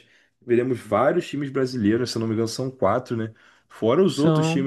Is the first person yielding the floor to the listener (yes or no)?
no